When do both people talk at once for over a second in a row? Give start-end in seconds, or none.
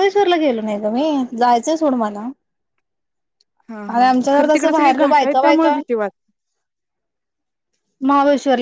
3.9-5.8